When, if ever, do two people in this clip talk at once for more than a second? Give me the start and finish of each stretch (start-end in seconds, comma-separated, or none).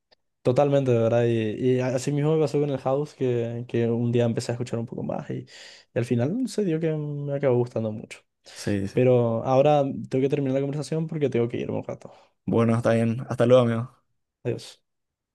none